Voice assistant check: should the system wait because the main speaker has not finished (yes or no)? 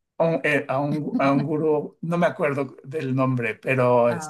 yes